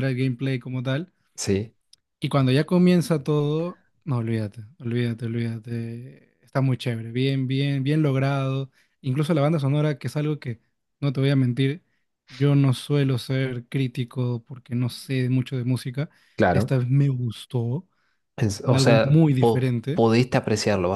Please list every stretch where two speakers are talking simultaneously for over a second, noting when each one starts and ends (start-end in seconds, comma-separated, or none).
18.4-20.0